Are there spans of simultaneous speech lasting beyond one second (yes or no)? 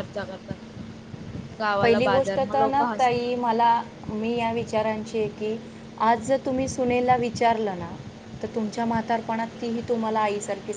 yes